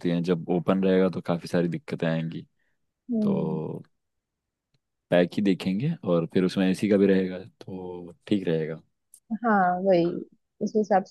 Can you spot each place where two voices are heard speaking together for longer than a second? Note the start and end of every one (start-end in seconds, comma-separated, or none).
none